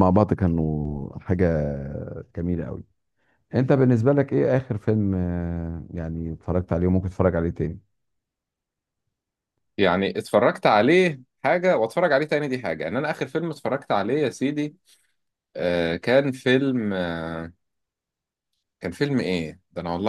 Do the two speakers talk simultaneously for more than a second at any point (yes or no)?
no